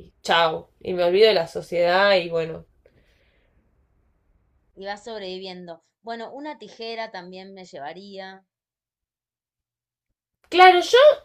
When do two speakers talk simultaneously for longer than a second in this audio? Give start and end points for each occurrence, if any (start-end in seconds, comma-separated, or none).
none